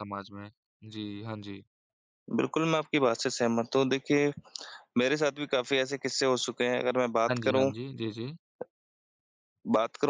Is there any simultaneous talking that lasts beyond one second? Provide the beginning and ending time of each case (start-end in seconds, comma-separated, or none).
none